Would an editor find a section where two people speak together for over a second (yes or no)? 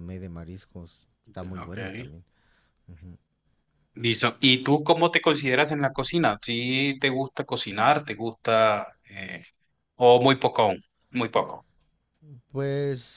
no